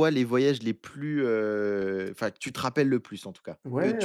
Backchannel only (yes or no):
no